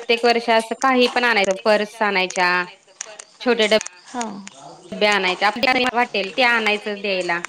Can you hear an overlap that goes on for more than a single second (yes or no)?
yes